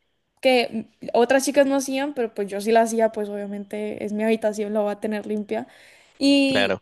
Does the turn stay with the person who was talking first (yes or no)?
yes